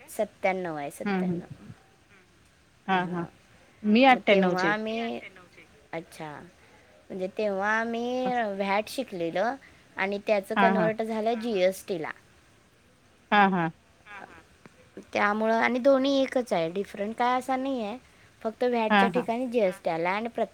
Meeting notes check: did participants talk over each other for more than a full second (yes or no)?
no